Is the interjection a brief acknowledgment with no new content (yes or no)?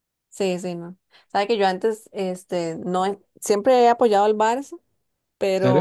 yes